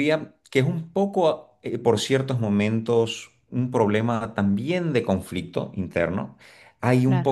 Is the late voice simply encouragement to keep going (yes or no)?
yes